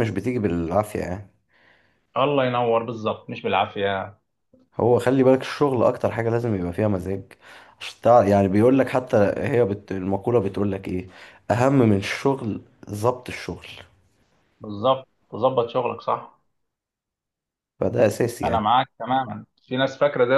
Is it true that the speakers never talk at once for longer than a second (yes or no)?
yes